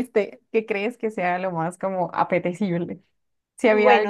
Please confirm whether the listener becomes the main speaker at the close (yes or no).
yes